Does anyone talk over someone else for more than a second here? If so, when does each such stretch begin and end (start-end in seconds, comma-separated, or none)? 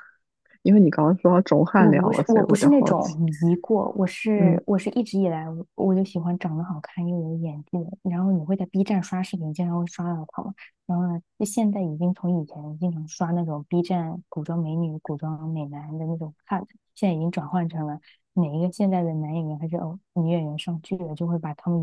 1.8-3.1